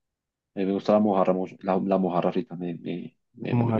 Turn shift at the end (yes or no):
no